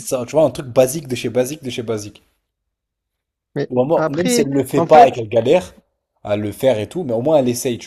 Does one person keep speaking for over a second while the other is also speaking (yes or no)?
yes